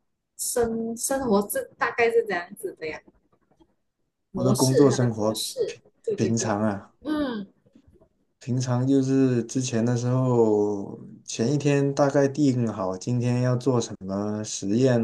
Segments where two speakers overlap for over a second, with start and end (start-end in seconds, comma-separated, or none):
4.3-6.5